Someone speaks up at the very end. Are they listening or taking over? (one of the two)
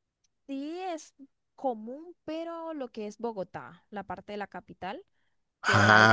listening